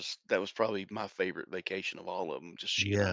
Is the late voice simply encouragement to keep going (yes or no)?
no